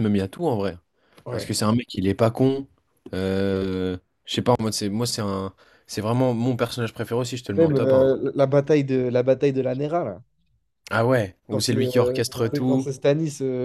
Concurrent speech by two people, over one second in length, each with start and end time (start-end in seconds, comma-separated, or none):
11.5-12.9